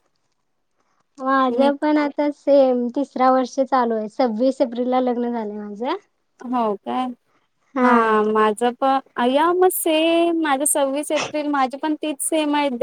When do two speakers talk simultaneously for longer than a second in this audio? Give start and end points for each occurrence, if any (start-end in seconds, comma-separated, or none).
none